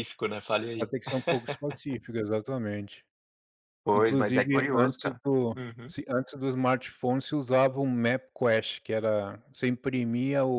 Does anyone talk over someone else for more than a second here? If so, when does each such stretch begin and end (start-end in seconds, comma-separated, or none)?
3.9-5.9